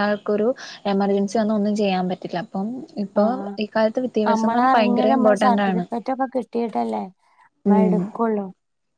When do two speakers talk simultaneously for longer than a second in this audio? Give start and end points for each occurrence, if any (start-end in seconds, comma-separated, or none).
4.3-5.8